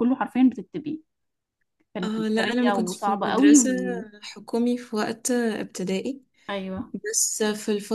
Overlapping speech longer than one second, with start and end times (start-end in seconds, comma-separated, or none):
2.0-3.7